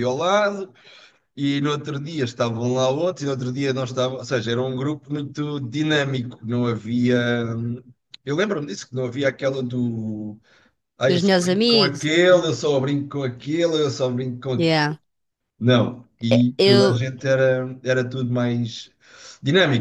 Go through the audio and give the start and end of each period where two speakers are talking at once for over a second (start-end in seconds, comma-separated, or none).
11.1-12.6